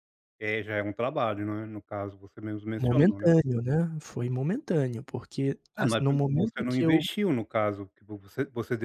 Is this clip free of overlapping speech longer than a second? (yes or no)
no